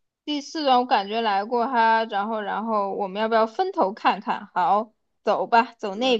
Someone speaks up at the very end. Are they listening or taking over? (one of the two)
listening